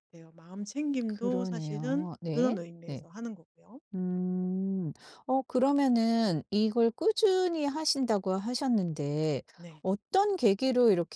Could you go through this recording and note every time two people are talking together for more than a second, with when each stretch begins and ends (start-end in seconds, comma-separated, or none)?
1.1-3.1